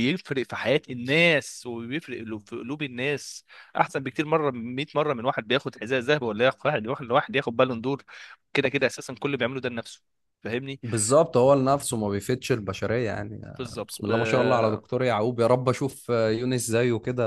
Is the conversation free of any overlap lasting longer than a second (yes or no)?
yes